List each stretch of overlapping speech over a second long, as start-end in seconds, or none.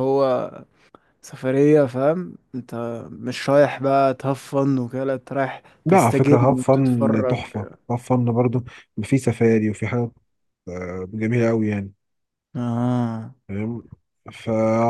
5.9-7.4